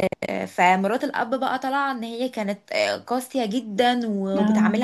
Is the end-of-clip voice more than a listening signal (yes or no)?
no